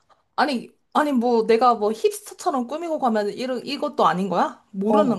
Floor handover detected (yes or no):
yes